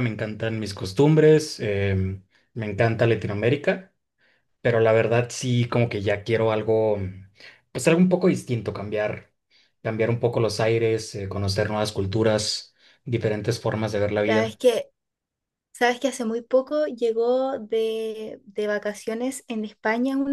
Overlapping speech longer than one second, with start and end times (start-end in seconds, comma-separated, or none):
none